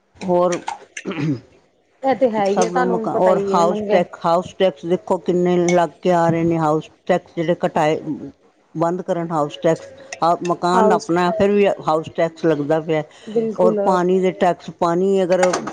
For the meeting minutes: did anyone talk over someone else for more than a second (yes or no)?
yes